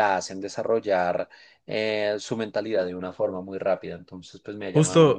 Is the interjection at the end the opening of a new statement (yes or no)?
yes